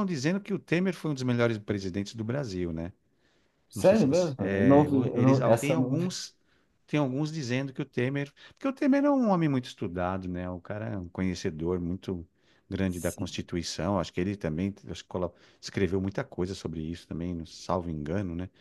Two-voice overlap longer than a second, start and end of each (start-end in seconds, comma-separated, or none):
3.7-6.2